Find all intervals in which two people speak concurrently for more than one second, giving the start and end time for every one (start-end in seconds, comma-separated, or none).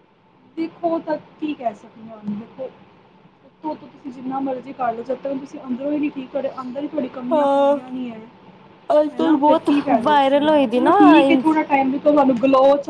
9.2-11.4